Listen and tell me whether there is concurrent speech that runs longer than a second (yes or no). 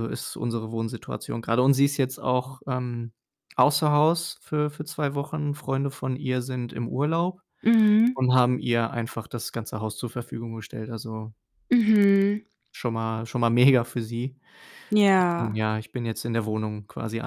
no